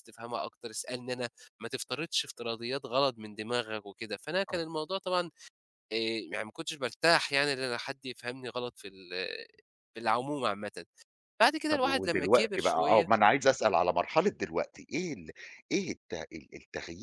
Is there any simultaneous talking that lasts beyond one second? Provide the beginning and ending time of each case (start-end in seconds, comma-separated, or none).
11.7-13.1